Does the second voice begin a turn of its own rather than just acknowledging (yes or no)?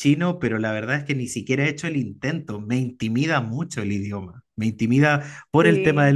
no